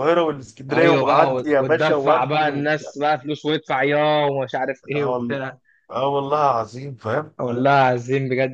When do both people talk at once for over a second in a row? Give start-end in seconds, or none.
0.7-2.9